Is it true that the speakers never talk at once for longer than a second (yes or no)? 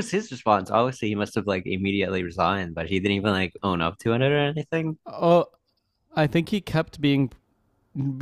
yes